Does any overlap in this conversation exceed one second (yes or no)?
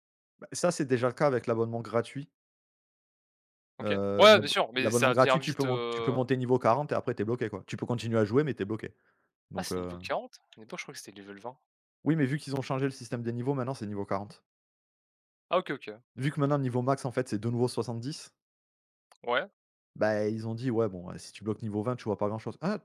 yes